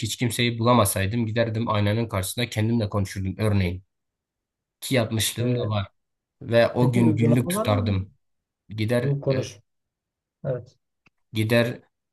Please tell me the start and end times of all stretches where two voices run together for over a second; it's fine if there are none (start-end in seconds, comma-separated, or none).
6.8-8.0